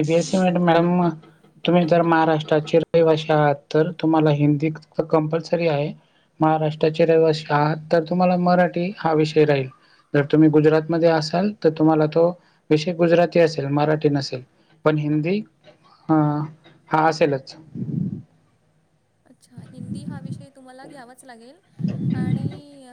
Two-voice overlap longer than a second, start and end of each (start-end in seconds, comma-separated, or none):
none